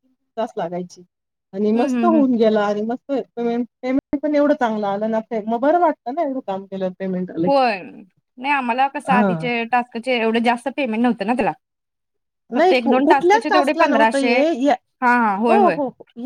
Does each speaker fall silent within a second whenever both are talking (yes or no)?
no